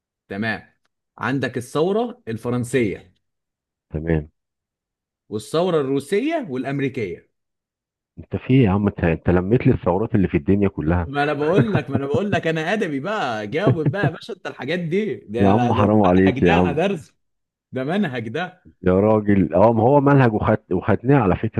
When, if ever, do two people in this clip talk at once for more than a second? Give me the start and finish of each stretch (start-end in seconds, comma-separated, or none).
15.4-16.8